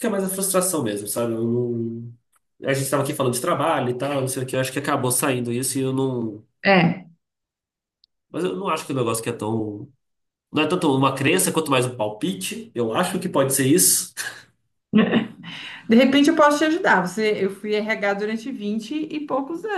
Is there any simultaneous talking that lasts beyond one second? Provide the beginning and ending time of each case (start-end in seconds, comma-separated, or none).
none